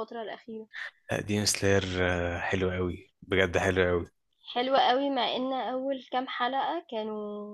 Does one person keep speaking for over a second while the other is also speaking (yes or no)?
no